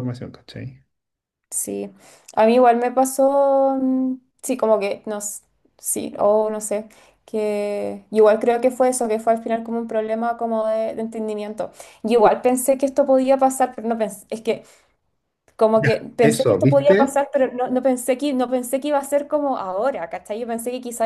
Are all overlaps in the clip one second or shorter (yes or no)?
no